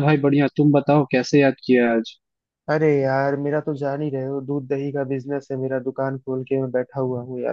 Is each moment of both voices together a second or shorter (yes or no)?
yes